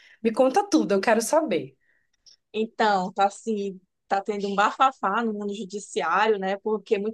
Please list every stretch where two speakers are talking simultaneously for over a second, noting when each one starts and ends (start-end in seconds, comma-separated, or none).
none